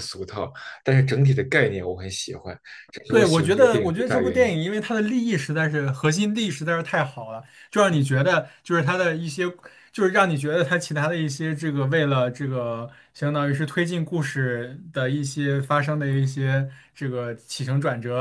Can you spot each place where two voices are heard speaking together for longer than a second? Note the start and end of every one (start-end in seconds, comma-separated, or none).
3.1-4.5